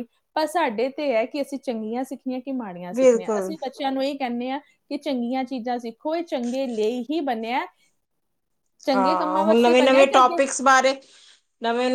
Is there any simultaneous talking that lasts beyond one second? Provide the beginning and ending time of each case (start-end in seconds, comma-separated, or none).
8.9-10.4